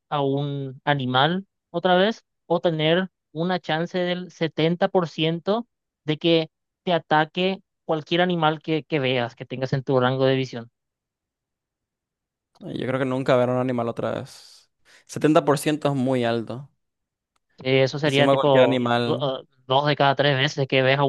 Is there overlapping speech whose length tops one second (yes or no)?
yes